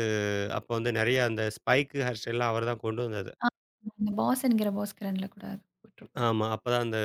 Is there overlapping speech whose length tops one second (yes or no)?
no